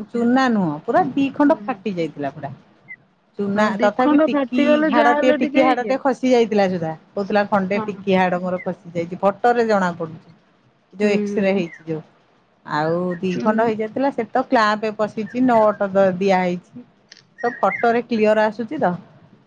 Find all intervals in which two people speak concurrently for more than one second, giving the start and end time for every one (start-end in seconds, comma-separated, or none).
3.6-5.9